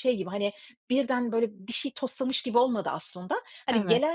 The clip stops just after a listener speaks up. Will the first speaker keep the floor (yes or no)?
yes